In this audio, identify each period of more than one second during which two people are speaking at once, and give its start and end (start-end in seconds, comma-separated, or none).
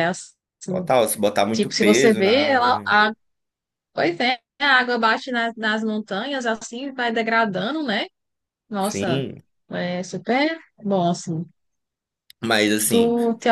1.5-3.0